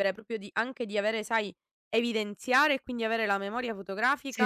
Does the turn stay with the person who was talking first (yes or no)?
no